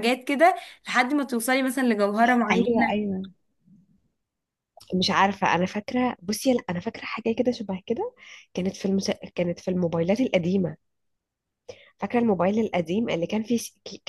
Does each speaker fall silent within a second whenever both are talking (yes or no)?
yes